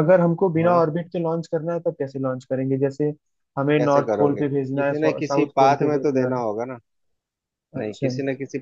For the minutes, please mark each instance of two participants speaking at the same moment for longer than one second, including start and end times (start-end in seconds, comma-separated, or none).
3.8-6.4